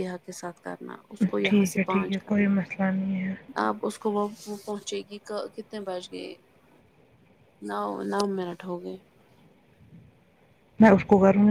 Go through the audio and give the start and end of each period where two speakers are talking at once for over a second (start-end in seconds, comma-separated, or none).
1.4-3.3